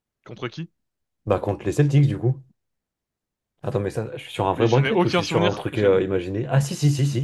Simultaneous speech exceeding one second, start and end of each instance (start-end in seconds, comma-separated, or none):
4.5-6.0